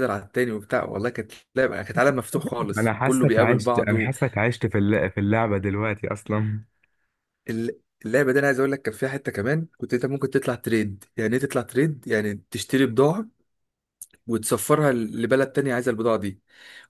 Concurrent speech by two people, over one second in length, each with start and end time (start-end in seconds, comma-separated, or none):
2.8-4.1